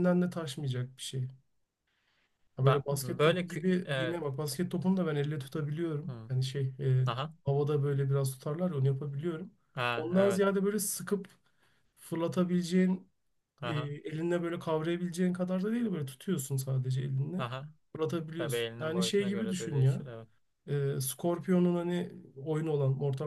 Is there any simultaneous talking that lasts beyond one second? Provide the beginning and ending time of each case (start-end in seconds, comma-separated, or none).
2.6-4.2, 18.4-20.0